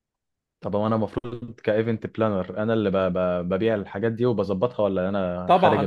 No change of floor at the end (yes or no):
no